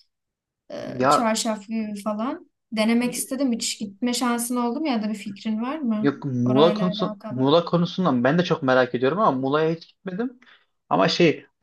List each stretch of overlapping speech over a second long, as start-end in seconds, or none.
6.0-7.5